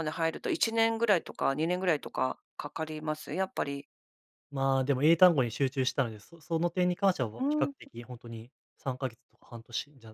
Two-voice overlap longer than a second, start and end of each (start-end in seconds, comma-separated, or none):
none